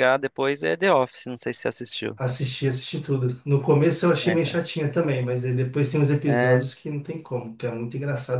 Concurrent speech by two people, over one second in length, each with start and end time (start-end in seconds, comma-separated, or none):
none